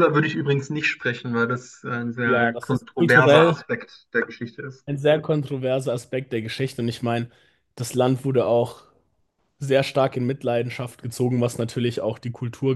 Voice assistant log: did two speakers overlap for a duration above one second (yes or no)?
yes